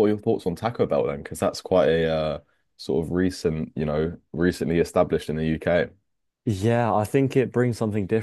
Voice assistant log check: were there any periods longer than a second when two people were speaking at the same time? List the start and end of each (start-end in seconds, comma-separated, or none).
none